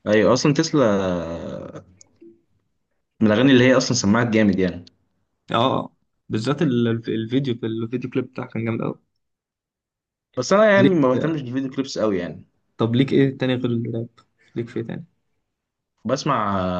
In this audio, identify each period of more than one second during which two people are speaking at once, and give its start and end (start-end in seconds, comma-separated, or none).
none